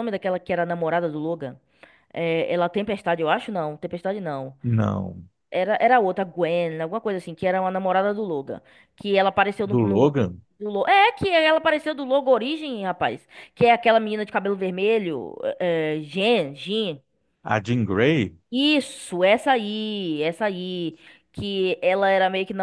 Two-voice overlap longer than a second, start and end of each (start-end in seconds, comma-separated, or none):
none